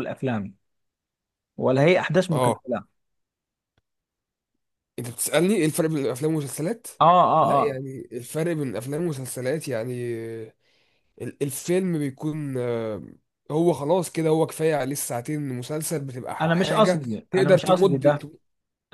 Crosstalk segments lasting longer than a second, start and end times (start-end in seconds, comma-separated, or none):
16.4-18.3